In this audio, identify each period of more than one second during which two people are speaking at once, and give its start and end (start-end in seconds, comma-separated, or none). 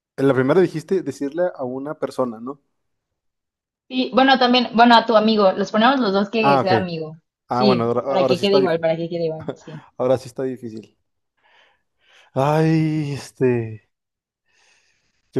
7.5-8.8